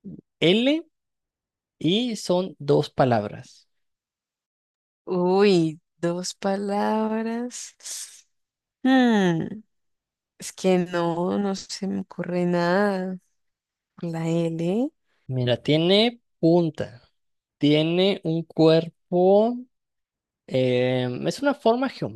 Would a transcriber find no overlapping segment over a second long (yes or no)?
yes